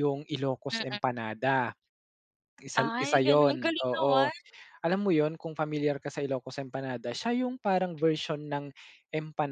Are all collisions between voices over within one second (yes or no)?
no